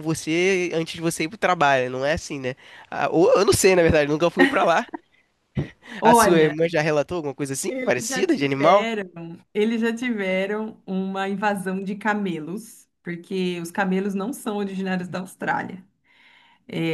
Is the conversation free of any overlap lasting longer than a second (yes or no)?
no